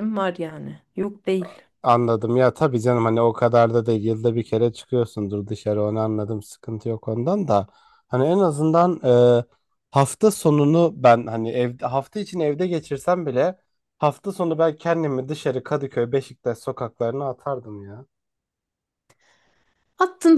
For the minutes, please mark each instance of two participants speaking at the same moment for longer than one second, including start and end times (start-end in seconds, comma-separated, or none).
none